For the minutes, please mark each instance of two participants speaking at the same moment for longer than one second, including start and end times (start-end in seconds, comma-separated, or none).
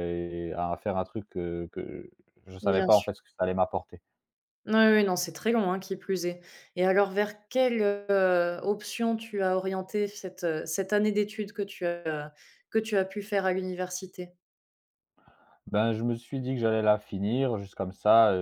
none